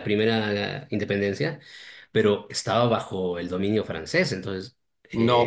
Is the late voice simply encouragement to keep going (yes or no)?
no